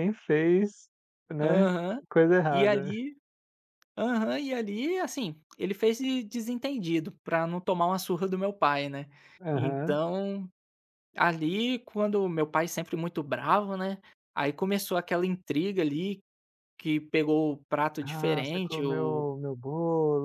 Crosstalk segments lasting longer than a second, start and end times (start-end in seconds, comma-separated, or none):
18.0-19.3